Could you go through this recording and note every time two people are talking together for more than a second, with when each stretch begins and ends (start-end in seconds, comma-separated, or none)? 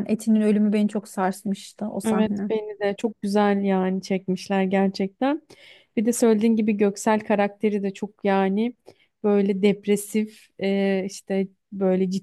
none